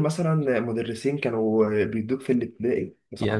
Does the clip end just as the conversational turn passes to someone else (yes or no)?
yes